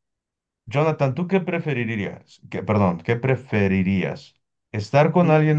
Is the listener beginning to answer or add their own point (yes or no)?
no